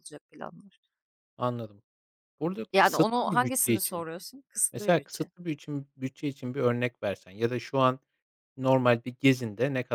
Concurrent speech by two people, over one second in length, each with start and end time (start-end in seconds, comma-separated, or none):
2.7-4.1